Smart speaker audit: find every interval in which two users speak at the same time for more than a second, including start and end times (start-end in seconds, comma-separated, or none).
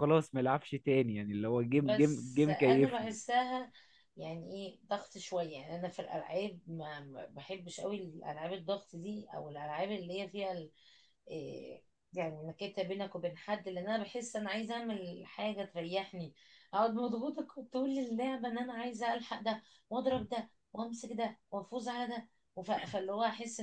1.8-3.1